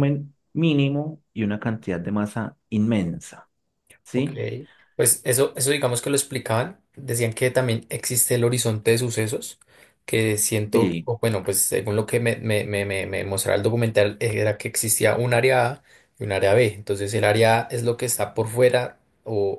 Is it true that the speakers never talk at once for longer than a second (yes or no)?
yes